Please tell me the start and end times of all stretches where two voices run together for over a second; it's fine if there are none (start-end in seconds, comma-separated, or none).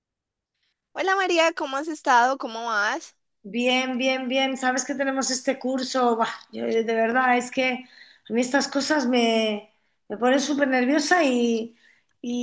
none